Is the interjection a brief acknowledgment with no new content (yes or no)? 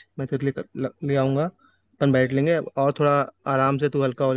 yes